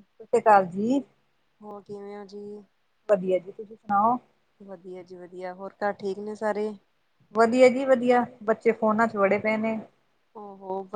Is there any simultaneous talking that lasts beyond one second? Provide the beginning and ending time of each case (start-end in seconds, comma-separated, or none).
none